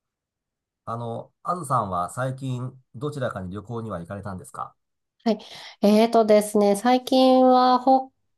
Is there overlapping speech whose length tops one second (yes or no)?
no